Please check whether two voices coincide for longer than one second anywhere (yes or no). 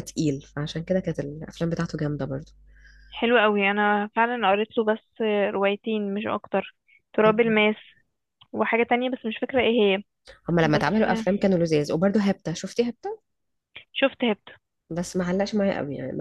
no